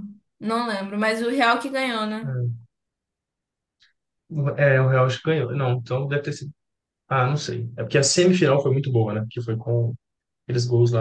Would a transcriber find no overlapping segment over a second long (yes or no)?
yes